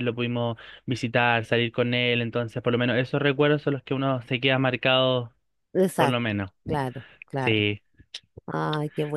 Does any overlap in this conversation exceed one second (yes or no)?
no